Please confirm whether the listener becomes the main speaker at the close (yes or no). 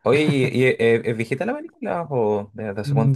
yes